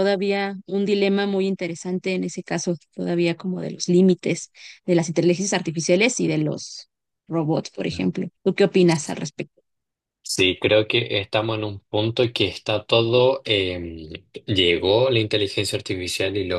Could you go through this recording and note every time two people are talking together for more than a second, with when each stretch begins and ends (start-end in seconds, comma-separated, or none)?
none